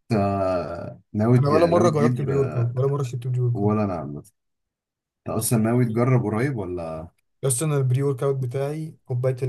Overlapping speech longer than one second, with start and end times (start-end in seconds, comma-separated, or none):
1.4-2.7